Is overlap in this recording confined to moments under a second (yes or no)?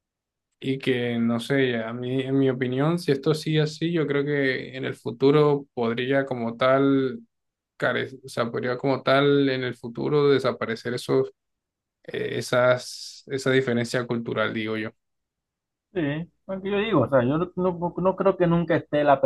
yes